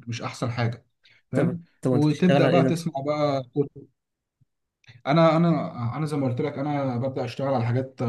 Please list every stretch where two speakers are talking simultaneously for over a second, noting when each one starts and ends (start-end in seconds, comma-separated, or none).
1.3-2.9